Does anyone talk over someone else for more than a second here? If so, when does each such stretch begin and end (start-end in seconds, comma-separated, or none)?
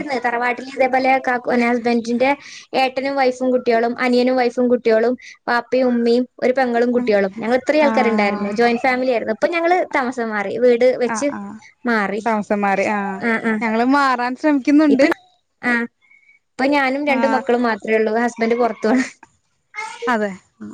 none